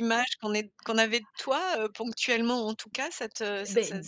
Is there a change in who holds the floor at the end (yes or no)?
yes